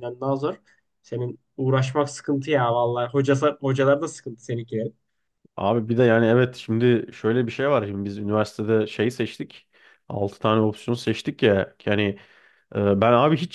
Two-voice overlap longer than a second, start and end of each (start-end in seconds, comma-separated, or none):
none